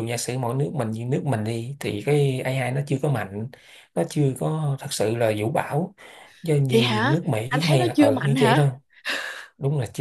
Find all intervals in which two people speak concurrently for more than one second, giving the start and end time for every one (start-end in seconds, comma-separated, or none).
6.7-8.7